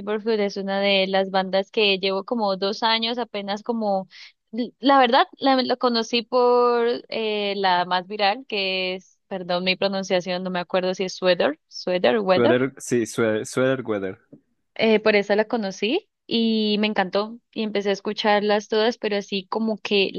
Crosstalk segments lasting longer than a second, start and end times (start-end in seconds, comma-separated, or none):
none